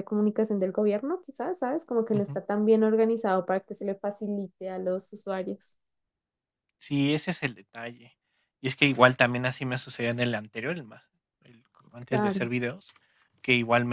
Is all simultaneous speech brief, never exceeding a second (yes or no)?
yes